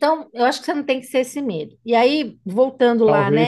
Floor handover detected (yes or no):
yes